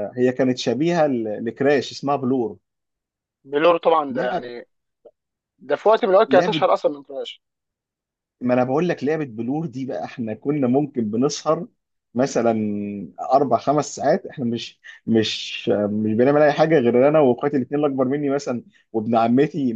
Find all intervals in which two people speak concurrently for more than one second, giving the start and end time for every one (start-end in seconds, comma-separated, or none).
none